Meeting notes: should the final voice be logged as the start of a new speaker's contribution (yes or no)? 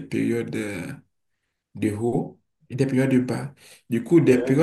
no